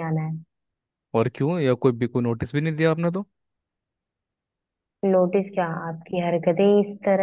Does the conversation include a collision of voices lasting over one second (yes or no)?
no